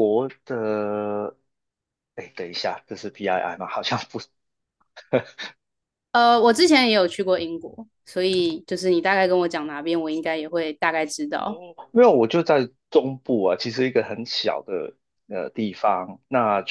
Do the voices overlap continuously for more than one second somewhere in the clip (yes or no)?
no